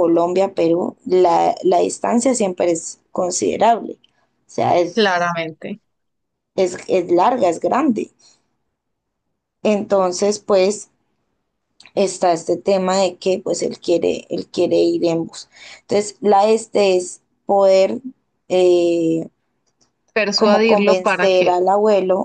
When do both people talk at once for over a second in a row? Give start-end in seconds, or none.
20.3-21.5